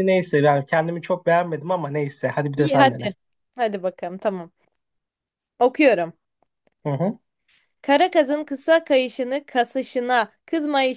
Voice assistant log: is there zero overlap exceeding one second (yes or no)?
yes